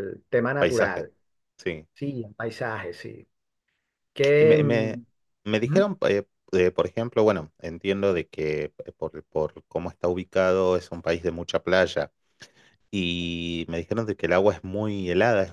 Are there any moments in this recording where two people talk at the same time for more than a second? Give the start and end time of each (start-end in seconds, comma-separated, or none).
none